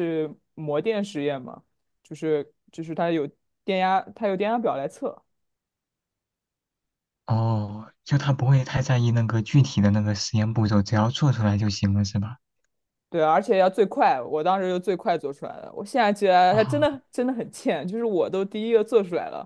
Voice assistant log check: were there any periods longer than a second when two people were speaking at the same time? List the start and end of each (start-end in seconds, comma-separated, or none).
none